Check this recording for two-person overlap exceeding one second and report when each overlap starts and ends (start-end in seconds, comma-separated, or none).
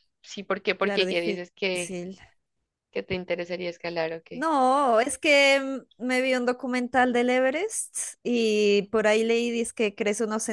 0.8-2.0